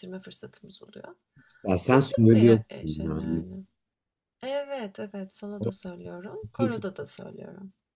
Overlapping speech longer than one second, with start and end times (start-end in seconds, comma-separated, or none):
1.9-3.4